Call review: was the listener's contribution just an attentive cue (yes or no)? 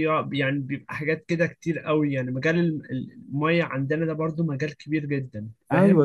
no